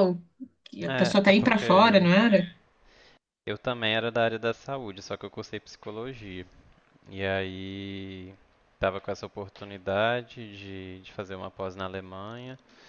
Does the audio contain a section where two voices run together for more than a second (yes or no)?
yes